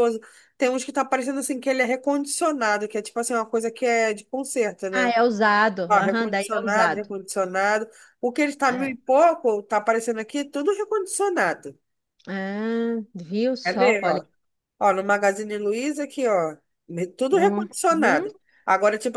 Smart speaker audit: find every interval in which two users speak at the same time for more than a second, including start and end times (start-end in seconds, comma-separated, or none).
5.9-7.1